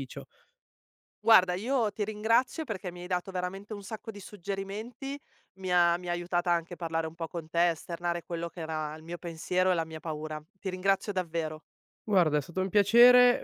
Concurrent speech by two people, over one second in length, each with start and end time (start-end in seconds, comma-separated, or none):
none